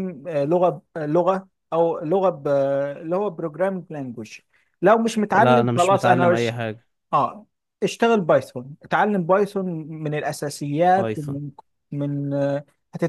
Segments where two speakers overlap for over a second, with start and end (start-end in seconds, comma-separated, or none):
5.3-6.6